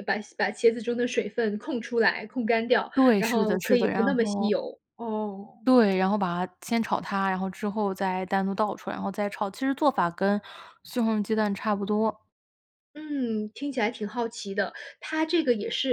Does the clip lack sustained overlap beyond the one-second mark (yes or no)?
no